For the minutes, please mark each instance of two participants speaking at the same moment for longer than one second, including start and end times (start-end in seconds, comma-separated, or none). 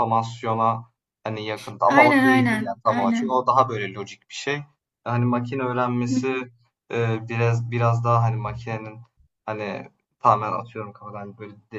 1.9-3.4